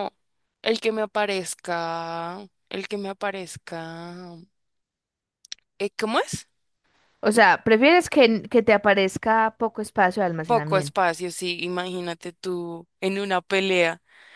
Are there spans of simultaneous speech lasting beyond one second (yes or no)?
no